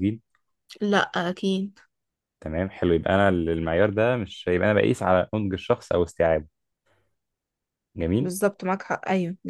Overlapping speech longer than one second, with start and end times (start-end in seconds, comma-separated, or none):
none